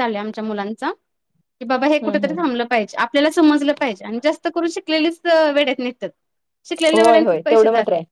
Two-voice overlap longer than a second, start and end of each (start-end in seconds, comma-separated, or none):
none